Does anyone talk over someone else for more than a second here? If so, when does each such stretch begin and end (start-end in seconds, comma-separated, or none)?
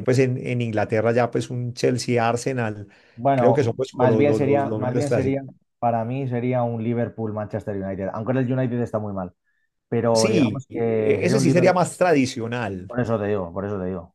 3.3-5.4, 10.1-11.8